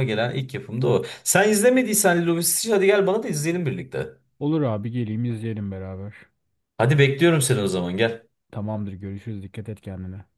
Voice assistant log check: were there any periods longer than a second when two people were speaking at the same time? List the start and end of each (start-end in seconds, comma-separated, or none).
none